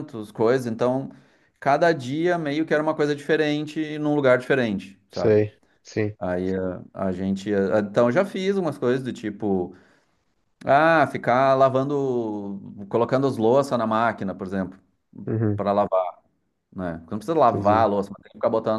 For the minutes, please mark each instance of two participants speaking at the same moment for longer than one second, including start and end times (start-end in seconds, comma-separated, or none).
none